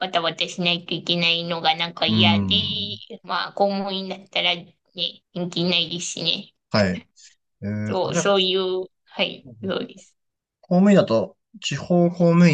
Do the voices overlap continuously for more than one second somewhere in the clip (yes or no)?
no